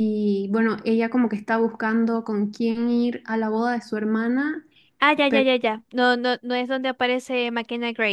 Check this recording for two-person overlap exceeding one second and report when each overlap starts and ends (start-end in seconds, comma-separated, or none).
none